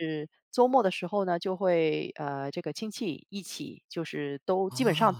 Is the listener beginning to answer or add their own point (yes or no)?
no